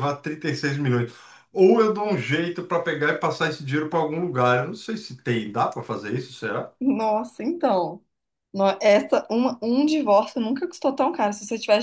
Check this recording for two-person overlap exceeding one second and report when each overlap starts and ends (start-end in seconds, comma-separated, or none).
none